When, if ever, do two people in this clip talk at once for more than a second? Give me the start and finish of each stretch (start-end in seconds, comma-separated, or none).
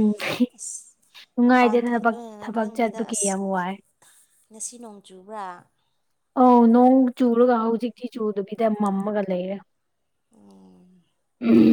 1.4-3.4